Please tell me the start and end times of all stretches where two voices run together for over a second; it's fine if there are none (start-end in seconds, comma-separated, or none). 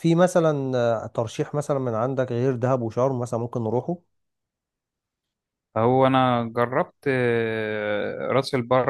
none